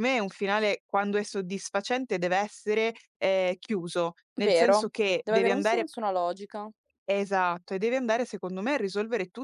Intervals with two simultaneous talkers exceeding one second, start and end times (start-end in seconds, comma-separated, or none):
4.4-5.9